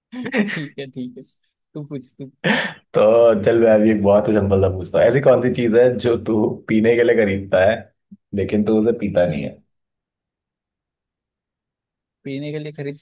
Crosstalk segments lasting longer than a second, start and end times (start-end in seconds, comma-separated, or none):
none